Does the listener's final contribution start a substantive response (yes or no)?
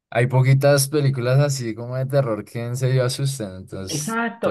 yes